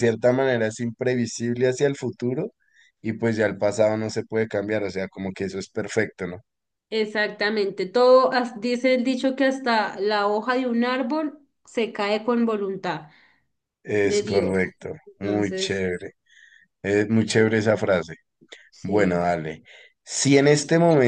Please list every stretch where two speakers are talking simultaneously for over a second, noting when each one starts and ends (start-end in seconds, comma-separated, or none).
14.0-15.9